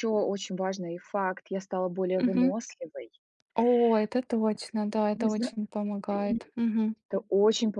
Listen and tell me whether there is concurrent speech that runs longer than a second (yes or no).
no